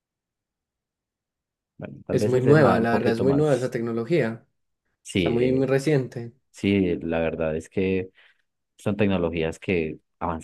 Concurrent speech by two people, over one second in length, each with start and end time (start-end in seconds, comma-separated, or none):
2.1-3.7